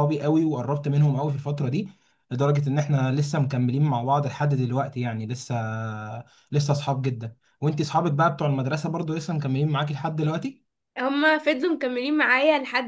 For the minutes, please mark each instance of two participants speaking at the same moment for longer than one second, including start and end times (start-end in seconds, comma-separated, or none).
none